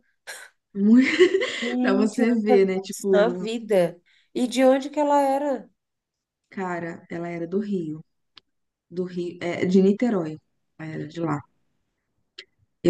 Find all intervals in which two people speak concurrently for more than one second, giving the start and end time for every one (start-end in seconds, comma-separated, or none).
1.8-3.5